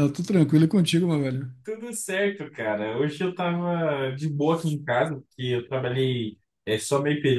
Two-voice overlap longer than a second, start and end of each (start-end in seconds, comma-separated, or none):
none